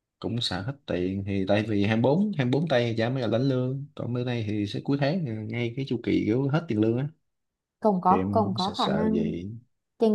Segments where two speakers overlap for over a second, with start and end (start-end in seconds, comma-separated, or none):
8.1-9.3